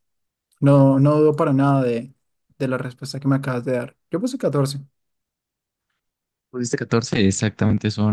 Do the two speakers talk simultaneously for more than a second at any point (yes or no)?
no